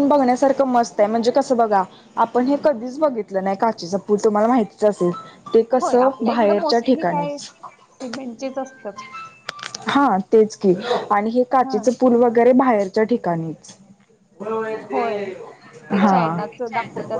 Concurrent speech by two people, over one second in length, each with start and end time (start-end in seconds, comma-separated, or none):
5.8-7.4